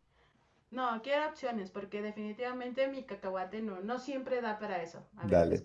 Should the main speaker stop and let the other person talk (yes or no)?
yes